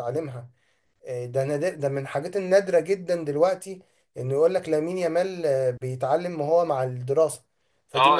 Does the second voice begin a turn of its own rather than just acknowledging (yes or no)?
yes